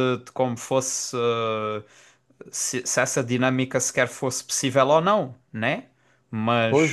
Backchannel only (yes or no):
no